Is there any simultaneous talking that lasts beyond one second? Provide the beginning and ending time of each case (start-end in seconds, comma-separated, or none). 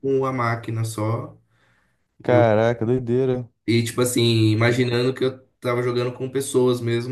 none